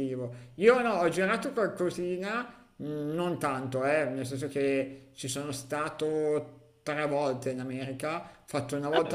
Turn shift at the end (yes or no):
no